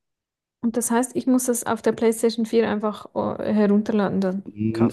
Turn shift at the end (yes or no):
yes